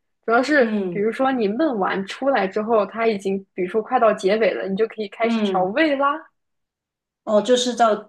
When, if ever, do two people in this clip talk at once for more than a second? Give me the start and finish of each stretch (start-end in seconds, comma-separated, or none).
none